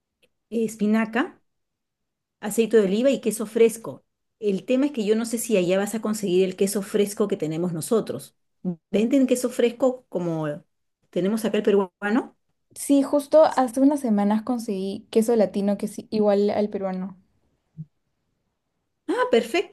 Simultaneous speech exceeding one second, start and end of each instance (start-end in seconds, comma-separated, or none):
none